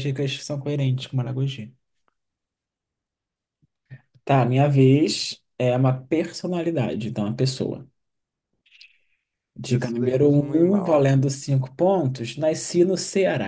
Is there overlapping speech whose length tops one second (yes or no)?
yes